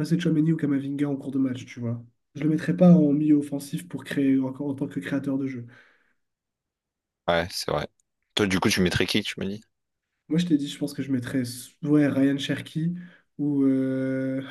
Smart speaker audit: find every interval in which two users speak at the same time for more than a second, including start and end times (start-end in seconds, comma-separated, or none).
none